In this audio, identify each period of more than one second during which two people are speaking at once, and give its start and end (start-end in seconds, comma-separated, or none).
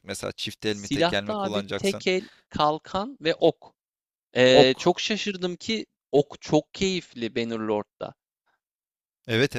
0.7-2.0